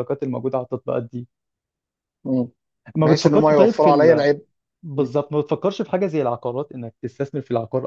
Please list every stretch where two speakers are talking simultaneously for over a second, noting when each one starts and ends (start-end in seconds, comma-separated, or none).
3.0-4.3